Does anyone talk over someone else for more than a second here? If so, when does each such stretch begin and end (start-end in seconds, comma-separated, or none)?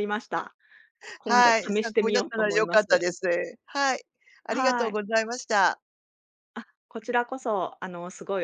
1.2-3.1